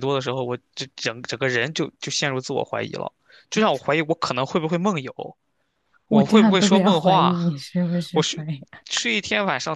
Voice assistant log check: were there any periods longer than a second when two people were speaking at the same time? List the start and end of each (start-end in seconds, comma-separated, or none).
6.1-7.4